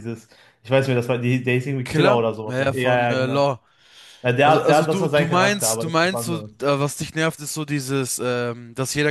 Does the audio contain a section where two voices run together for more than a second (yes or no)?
yes